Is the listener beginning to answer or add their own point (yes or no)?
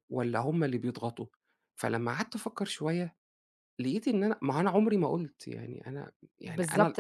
yes